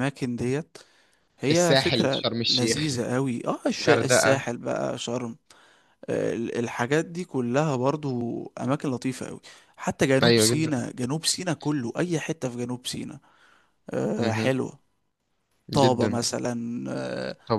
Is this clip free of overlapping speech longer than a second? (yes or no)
no